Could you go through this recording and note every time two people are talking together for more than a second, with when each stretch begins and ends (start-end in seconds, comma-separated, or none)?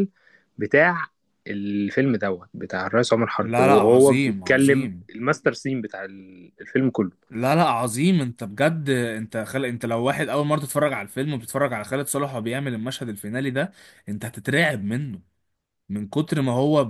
3.4-5.1